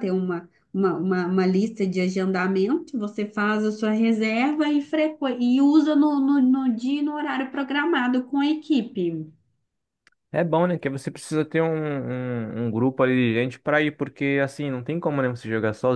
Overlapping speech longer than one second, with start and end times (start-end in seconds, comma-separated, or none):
none